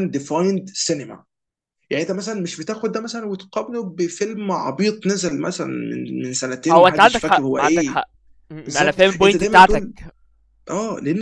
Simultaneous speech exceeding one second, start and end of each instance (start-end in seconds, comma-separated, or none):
6.7-8.0, 8.7-9.8